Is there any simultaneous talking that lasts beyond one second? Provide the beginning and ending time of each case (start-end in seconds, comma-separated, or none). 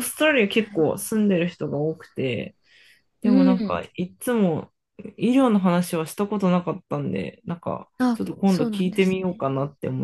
8.0-9.4